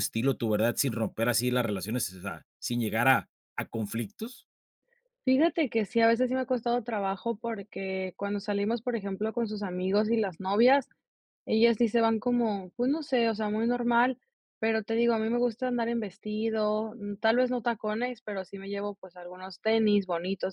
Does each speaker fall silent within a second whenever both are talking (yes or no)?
yes